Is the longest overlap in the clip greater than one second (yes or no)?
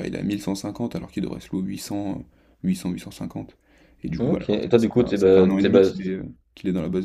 yes